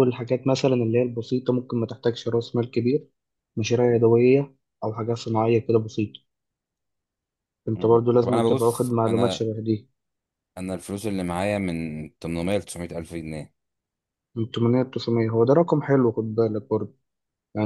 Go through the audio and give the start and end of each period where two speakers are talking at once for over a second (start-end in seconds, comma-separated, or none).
7.8-9.5